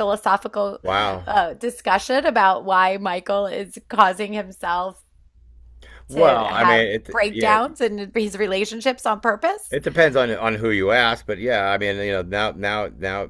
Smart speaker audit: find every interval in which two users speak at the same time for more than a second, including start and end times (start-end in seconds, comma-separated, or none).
6.1-7.6